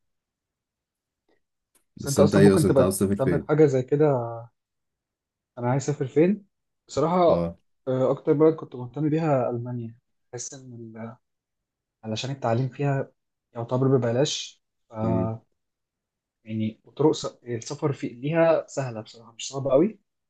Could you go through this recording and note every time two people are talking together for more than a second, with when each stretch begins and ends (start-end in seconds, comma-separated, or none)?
2.0-3.6